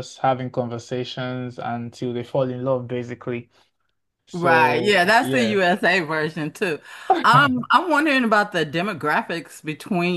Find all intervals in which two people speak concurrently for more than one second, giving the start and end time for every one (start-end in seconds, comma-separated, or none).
4.3-5.6